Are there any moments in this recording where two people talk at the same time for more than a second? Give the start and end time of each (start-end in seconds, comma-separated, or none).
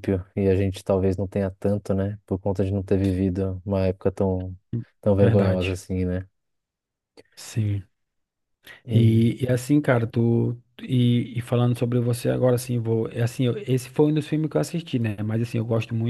none